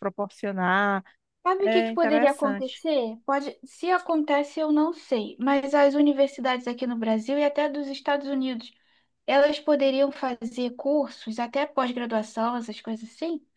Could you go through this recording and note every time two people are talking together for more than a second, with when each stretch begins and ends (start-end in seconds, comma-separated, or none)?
1.6-2.8